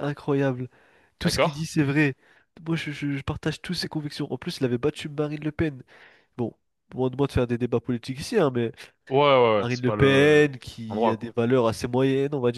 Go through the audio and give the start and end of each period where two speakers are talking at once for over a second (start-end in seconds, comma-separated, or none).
9.6-11.3